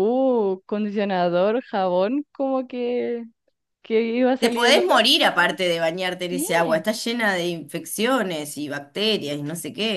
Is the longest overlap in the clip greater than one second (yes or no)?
yes